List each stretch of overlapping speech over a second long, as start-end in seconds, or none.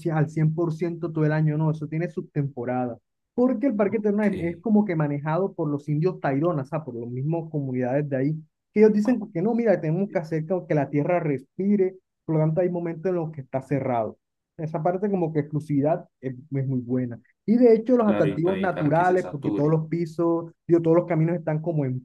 18.0-19.8